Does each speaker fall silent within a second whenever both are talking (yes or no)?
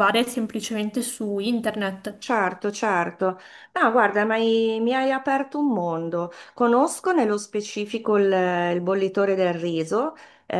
yes